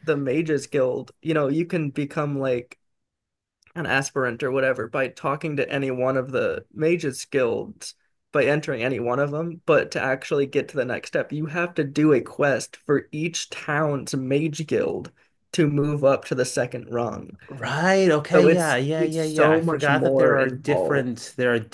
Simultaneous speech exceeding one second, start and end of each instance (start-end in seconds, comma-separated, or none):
18.3-21.1